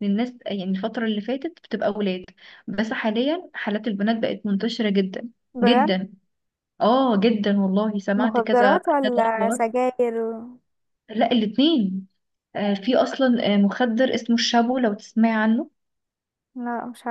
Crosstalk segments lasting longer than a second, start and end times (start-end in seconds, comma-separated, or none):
8.2-9.6